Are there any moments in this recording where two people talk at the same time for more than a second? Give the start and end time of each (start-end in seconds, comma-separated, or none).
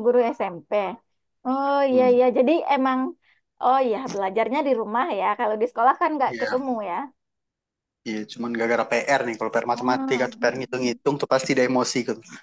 9.7-11.0